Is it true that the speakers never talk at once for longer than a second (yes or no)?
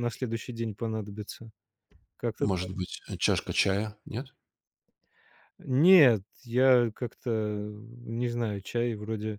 yes